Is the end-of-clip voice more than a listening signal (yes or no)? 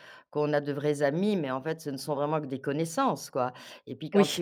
no